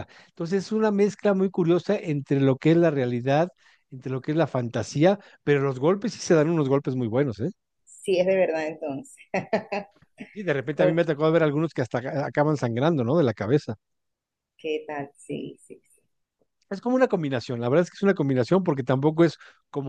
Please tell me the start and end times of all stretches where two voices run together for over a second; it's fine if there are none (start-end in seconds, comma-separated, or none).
none